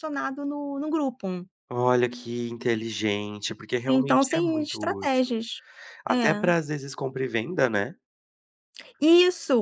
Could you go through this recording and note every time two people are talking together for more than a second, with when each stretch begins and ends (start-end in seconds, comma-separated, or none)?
3.9-5.3